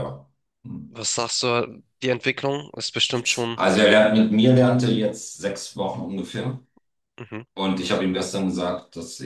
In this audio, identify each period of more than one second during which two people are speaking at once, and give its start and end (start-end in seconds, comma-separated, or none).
none